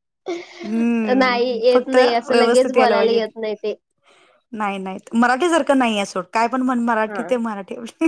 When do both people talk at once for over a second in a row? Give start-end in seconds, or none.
1.2-3.2